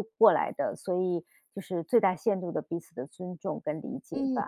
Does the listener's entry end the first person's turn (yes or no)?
yes